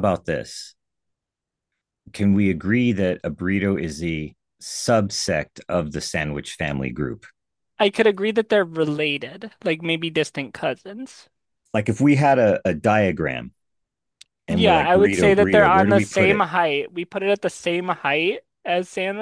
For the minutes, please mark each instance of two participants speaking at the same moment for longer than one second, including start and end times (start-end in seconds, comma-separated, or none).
14.5-16.4